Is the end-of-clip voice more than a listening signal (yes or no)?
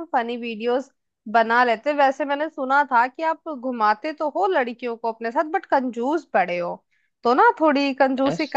no